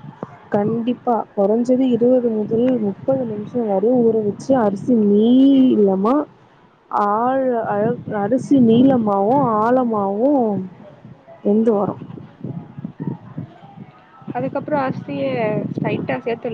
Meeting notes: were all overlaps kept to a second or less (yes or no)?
yes